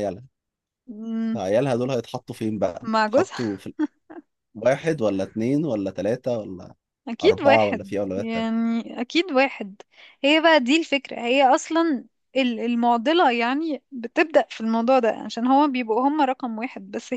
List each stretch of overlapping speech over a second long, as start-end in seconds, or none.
7.2-8.5